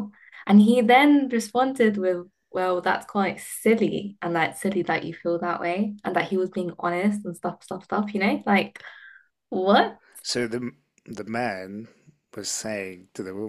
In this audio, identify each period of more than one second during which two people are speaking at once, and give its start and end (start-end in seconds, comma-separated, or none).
none